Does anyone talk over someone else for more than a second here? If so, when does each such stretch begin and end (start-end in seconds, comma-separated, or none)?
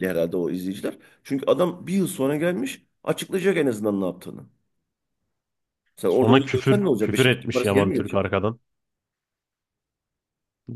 6.1-8.3